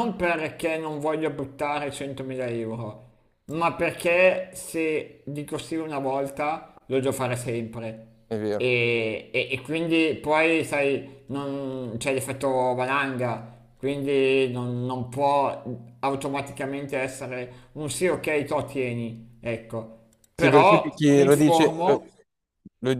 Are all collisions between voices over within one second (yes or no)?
no